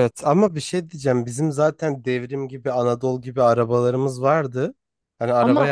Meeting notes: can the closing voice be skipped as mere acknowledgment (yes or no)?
yes